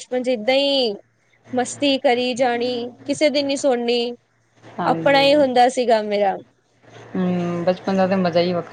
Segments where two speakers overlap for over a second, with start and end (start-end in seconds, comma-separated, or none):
none